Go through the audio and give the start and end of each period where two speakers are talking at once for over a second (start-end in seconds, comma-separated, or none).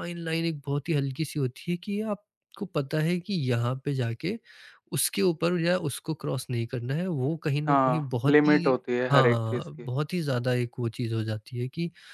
7.7-9.9